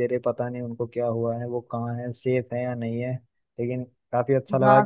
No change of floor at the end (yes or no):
no